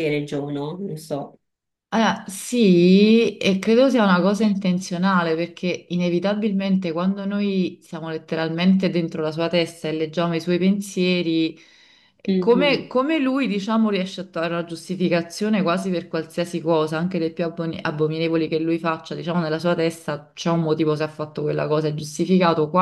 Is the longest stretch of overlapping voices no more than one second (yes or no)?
yes